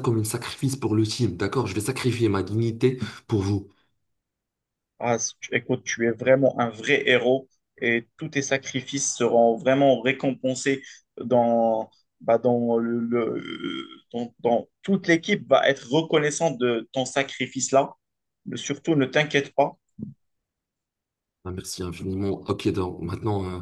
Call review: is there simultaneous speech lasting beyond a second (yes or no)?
no